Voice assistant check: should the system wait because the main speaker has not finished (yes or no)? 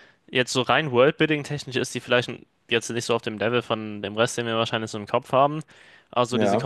yes